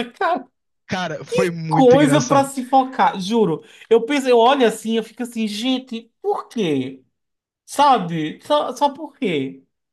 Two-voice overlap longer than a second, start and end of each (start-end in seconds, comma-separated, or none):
1.3-2.5